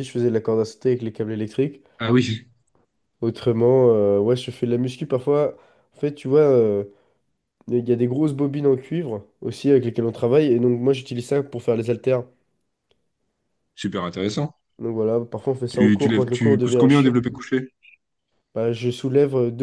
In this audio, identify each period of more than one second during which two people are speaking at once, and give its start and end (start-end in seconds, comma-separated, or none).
15.7-17.2